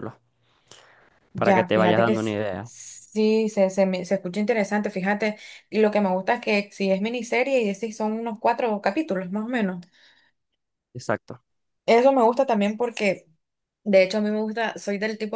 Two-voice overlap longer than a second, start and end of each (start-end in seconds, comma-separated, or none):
1.4-2.7